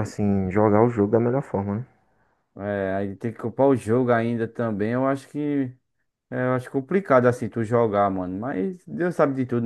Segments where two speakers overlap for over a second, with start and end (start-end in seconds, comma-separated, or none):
none